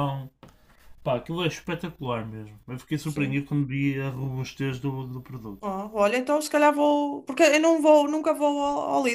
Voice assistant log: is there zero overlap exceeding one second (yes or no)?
yes